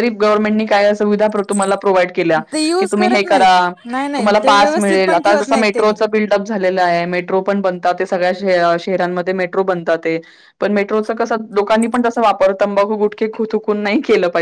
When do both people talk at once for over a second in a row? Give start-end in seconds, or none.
4.2-5.9